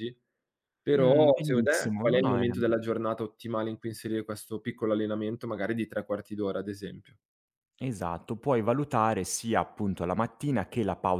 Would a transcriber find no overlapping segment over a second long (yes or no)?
no